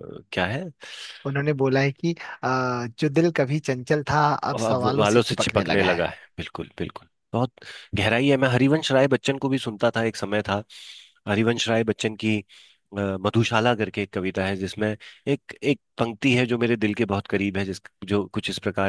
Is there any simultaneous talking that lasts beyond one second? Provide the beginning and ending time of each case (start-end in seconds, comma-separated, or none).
4.5-6.0